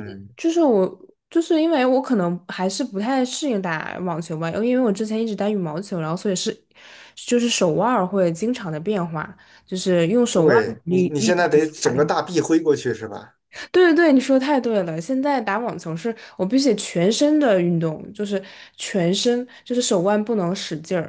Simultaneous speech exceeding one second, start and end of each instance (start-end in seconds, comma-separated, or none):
10.3-12.1